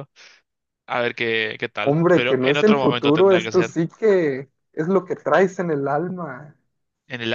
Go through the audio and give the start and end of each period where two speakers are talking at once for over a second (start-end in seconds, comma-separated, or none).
1.8-3.8